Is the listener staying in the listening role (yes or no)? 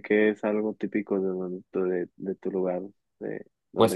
no